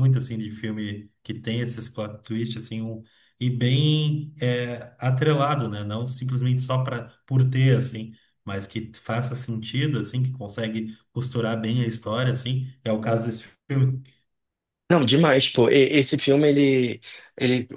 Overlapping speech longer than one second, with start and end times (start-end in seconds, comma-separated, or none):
none